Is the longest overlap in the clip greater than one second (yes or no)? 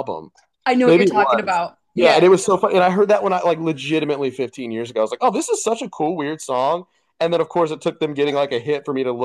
yes